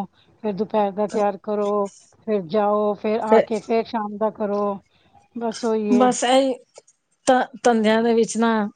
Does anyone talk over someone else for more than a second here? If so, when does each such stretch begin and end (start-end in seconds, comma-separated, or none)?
none